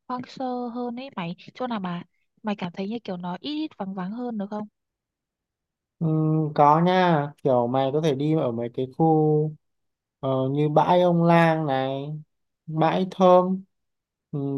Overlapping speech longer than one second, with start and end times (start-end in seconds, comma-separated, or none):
none